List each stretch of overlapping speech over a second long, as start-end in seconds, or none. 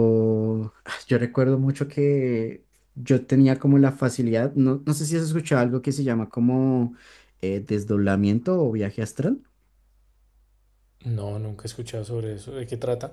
none